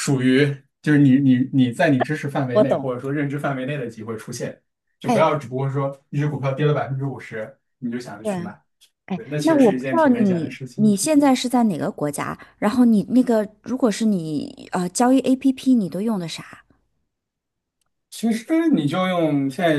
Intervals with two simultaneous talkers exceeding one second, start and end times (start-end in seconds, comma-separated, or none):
9.1-10.9